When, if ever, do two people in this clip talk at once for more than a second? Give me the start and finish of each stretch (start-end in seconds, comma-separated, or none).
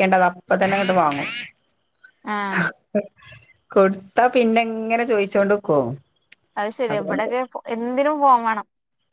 none